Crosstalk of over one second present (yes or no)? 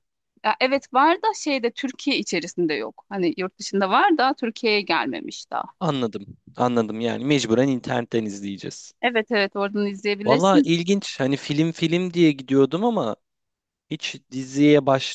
no